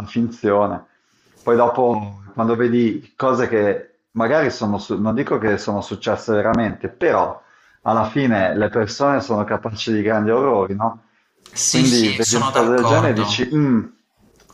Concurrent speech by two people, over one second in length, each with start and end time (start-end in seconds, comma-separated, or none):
11.6-13.5